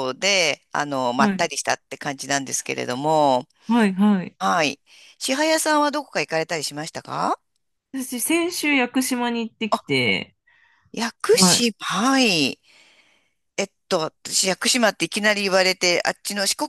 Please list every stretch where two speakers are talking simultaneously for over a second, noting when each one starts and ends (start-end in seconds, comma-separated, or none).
none